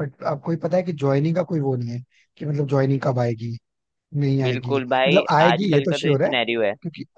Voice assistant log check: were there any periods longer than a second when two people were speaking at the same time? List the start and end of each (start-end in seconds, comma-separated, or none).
4.4-6.3